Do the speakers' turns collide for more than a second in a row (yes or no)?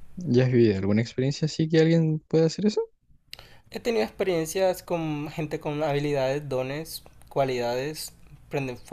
no